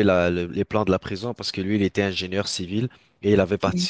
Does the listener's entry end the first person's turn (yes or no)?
no